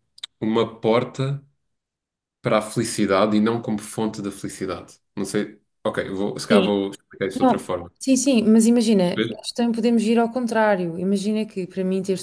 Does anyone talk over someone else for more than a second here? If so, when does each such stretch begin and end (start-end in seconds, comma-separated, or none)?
none